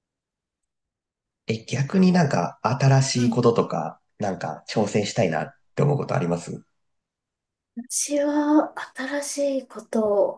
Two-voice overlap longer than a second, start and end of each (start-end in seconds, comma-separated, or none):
none